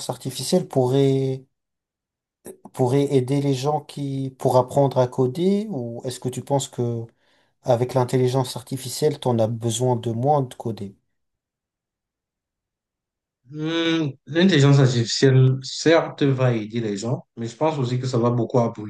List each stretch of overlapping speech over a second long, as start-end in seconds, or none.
none